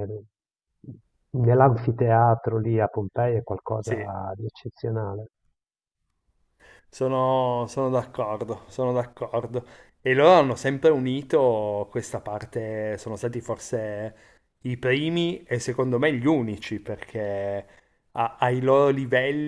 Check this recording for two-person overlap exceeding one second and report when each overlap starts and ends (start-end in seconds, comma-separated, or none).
none